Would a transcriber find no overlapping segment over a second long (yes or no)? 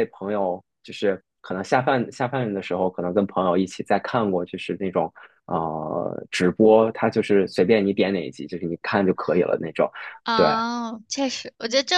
yes